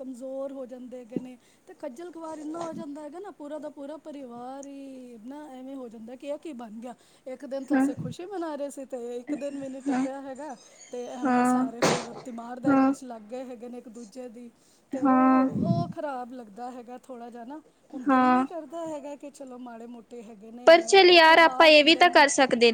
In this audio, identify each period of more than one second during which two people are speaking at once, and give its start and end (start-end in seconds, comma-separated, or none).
20.6-22.1